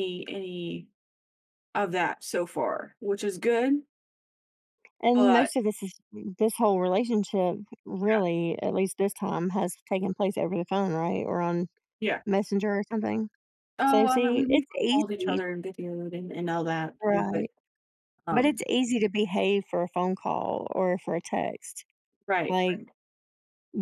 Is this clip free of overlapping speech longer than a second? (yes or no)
no